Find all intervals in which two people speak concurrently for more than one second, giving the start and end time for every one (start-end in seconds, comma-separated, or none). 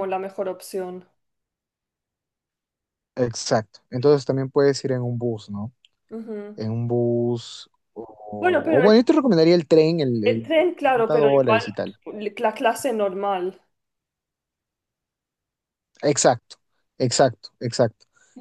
10.2-11.7